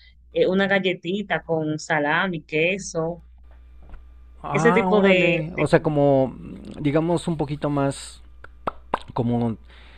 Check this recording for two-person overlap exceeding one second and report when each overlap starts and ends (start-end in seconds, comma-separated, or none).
4.5-6.0